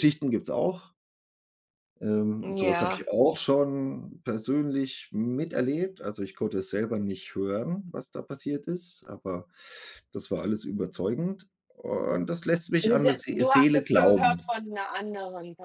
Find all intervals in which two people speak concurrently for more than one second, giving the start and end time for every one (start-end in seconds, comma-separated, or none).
12.8-14.5